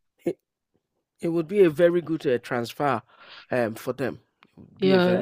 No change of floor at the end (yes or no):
no